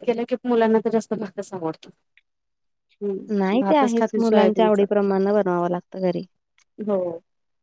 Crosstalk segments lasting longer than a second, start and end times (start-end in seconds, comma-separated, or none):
3.4-4.8